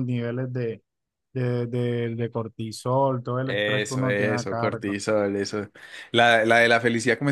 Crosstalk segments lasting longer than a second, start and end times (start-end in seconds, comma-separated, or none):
3.5-5.0